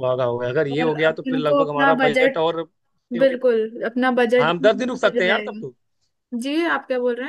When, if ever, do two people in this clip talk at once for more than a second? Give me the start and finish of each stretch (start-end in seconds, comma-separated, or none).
0.7-2.5, 4.4-5.7